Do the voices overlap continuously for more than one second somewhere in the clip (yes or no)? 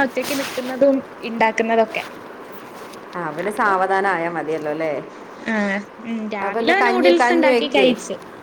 yes